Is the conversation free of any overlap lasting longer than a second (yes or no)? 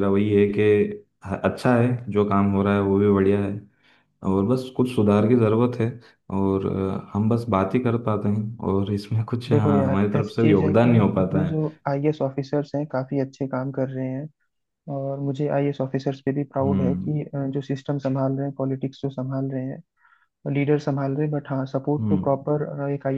no